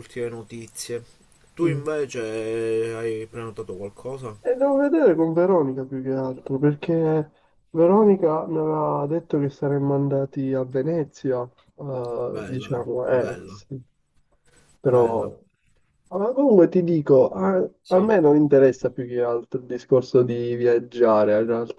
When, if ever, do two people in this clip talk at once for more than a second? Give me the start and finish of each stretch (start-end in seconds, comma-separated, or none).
12.3-13.6